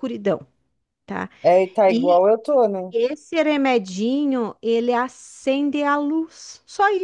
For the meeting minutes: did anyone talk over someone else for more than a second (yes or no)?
no